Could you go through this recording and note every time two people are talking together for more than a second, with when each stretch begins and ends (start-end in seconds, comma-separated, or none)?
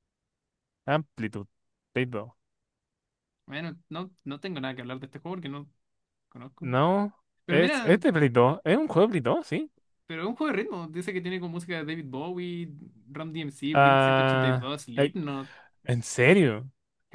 13.7-15.1